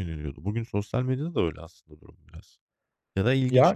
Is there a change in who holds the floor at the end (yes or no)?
yes